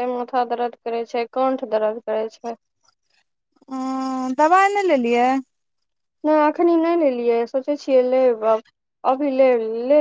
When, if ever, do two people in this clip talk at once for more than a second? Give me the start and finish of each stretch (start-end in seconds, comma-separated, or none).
none